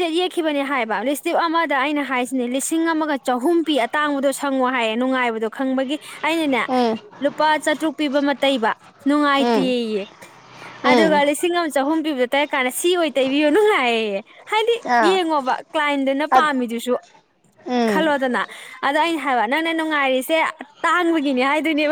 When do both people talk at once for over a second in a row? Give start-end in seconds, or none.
none